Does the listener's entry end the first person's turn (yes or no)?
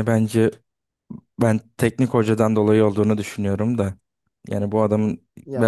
yes